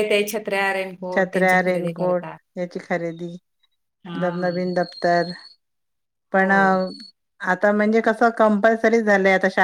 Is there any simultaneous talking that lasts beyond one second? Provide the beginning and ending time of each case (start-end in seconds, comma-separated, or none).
none